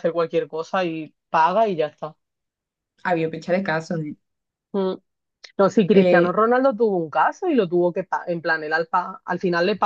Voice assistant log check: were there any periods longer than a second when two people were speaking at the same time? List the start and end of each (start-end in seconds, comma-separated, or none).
none